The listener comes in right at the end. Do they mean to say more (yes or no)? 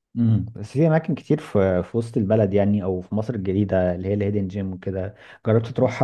no